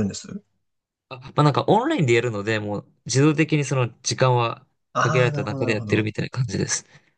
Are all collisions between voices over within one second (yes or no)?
no